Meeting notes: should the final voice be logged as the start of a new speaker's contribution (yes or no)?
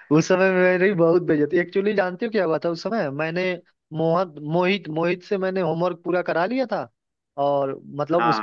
no